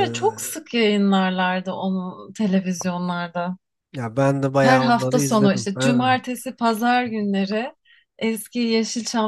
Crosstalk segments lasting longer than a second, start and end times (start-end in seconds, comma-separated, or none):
4.6-6.2